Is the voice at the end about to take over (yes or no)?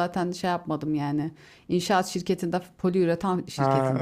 yes